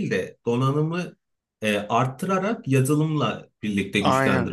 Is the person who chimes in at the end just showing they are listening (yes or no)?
no